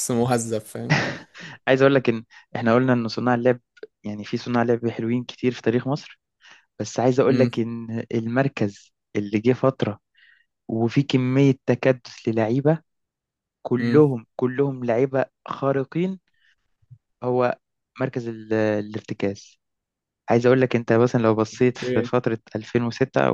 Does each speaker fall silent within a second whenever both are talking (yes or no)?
yes